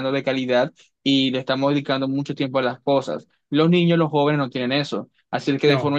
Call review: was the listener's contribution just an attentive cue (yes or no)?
yes